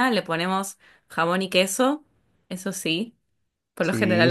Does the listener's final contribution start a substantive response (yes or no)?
no